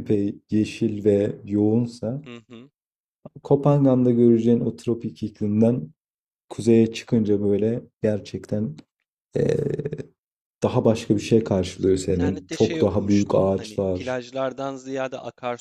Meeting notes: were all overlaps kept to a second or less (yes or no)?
no